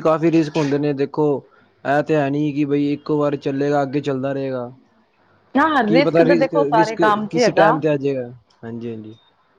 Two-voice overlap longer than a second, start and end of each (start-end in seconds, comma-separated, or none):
5.9-7.8